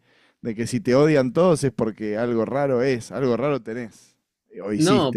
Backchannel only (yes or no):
no